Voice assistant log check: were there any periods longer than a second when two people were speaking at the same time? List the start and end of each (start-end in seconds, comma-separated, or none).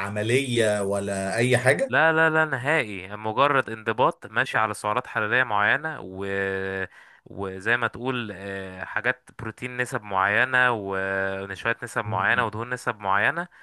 none